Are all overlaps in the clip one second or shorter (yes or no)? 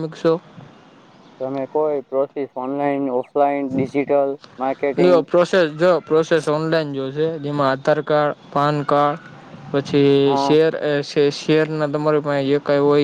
yes